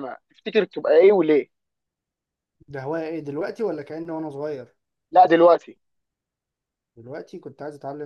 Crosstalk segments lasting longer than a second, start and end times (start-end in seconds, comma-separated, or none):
none